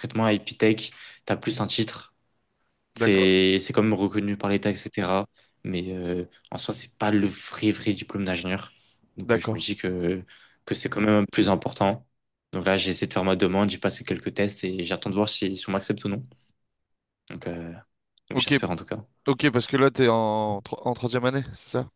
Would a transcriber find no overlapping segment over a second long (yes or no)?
yes